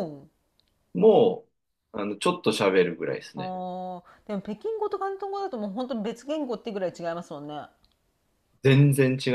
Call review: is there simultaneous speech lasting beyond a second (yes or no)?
no